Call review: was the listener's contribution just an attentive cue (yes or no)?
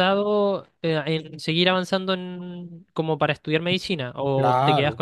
no